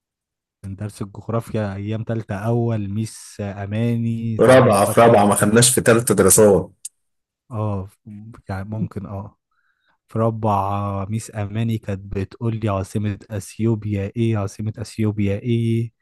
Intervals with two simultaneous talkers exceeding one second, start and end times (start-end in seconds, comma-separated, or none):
4.4-5.7